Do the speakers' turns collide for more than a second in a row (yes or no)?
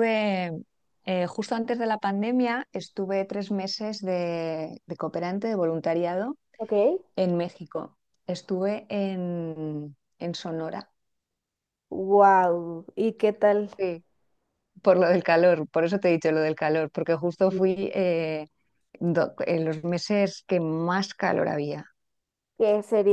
no